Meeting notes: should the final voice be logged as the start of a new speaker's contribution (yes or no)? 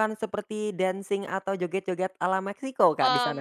yes